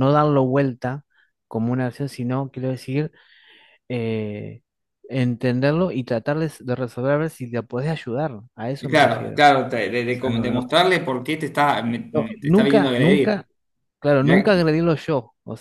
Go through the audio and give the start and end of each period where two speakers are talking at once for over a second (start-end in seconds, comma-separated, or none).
12.1-13.4